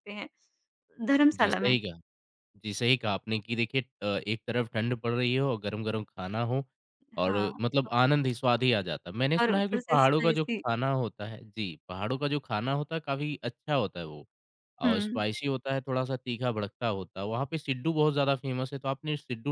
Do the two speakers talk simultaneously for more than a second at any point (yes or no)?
yes